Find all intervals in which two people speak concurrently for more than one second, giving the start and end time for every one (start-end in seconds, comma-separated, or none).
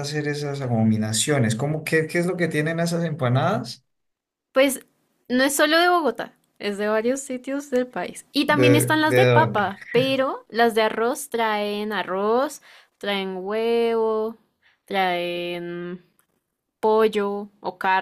8.4-9.7